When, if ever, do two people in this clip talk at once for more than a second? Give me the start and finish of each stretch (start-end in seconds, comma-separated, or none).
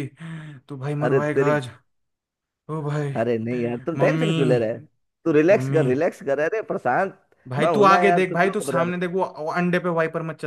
7.6-9.1